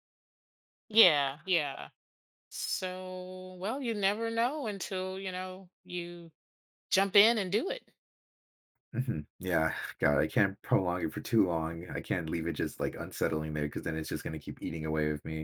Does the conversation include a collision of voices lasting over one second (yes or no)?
no